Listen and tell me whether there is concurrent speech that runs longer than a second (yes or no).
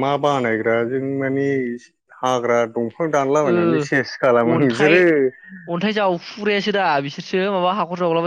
yes